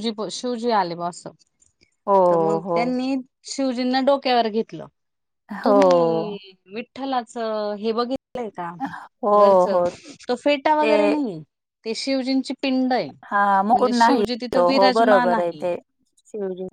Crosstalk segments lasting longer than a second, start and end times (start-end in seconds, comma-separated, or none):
13.3-15.6